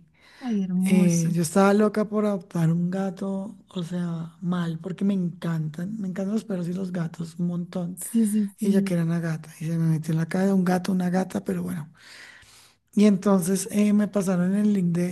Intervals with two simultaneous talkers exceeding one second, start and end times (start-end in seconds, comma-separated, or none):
none